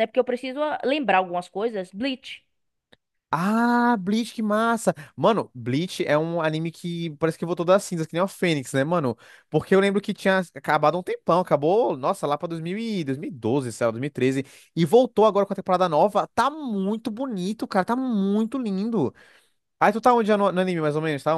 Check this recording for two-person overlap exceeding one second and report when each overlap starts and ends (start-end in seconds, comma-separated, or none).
none